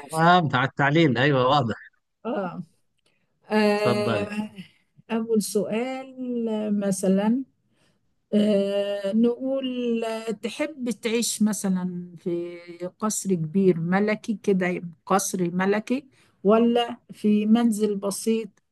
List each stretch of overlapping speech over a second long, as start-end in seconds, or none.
none